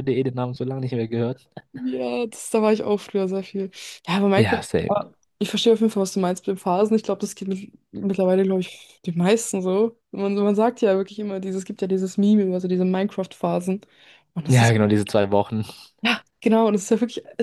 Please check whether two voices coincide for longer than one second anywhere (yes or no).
no